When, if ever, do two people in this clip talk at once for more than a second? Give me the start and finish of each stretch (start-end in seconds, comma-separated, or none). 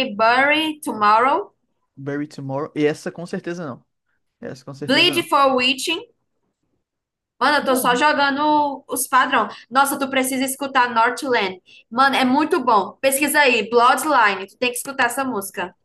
none